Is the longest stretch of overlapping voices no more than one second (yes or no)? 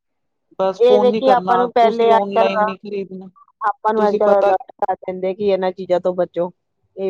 no